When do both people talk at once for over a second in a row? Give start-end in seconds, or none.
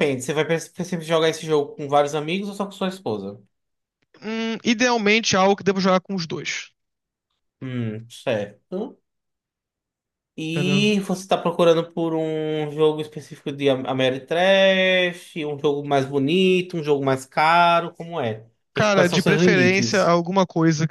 18.7-20.2